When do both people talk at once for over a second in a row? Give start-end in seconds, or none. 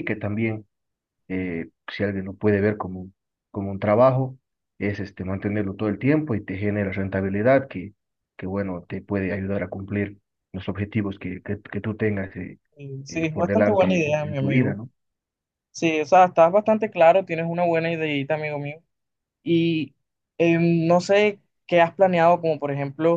13.1-14.8